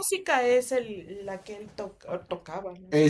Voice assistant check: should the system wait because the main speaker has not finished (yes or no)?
no